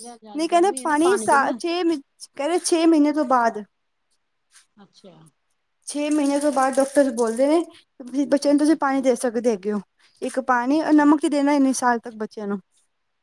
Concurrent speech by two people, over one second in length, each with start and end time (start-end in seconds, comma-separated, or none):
none